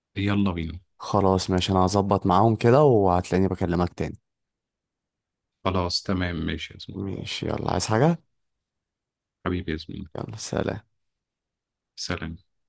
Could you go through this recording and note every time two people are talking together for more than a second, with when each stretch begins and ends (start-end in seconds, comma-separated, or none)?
none